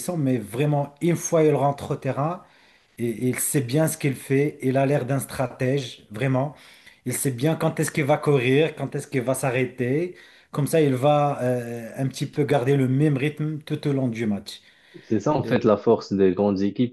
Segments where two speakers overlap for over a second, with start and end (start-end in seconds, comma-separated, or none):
none